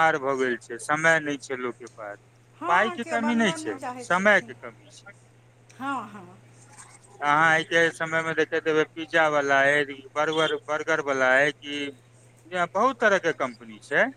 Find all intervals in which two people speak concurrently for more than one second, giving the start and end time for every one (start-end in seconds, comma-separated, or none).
2.7-4.5